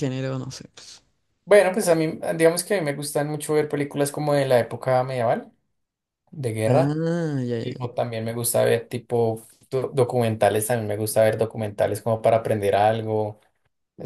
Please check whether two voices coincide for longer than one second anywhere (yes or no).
no